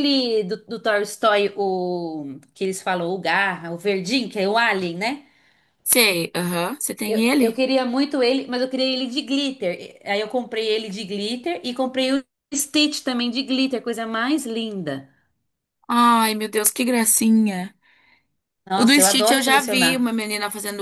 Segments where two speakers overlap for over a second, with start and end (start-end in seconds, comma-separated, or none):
18.8-20.1